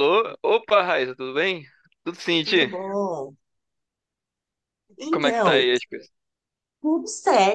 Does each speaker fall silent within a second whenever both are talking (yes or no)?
yes